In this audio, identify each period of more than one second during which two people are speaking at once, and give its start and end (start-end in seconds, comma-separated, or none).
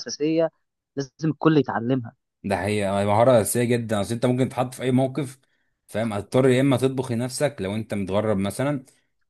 none